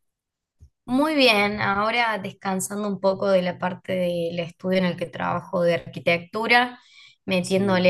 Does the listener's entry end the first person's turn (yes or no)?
no